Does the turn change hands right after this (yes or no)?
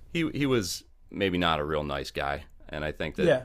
no